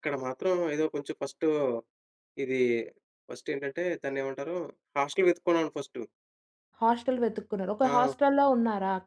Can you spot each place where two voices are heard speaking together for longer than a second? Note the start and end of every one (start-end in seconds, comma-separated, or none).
none